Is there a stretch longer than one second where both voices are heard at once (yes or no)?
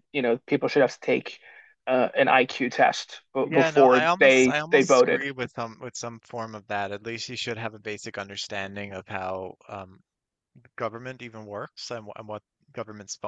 yes